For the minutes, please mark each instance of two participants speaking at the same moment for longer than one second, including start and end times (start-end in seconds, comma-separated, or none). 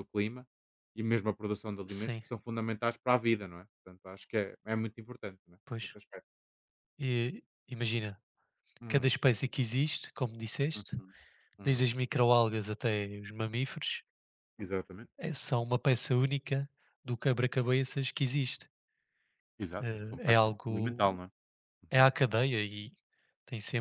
19.8-21.2